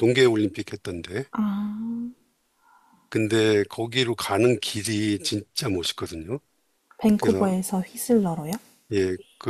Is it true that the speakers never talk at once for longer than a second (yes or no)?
yes